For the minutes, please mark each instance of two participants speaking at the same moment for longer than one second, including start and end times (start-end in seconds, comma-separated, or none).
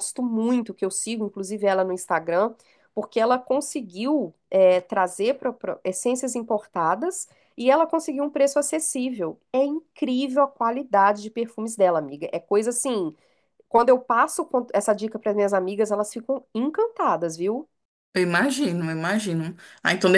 none